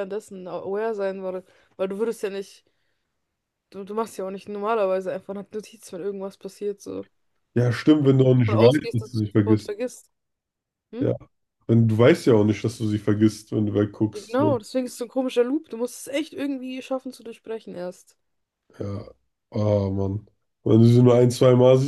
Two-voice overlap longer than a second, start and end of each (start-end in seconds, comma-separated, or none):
8.0-9.7